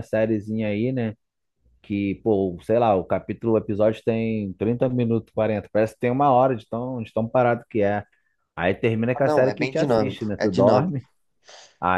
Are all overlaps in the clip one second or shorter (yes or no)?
no